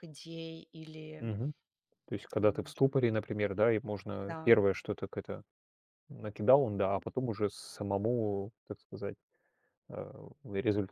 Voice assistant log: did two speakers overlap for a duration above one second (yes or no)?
no